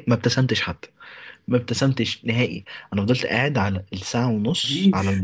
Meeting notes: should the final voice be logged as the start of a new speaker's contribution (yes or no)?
no